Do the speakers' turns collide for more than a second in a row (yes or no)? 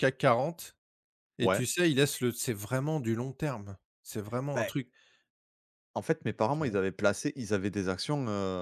no